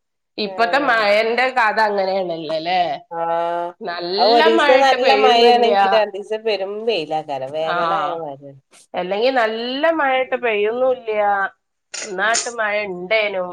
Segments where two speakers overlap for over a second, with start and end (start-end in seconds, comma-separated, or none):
4.2-5.8